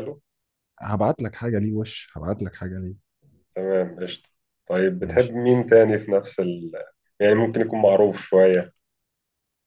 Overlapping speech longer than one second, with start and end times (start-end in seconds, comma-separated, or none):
none